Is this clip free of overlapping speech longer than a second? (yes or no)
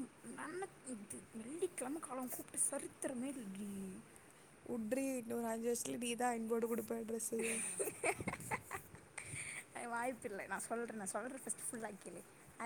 yes